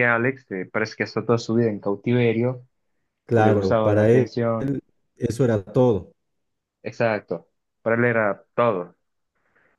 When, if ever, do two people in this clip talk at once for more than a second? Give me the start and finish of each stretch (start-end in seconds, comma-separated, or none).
3.3-4.7